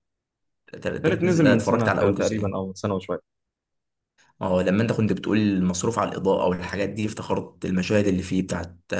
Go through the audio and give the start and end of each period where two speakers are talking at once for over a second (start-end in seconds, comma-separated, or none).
1.1-2.6